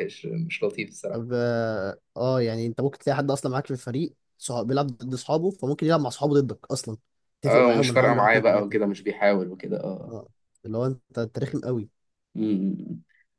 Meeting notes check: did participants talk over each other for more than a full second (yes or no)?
yes